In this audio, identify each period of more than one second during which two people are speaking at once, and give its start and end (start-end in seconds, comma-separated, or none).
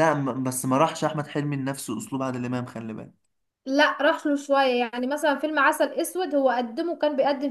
none